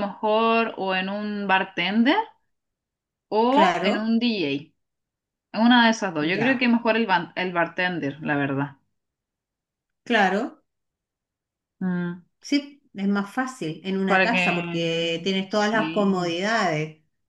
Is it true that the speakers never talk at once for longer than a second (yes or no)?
no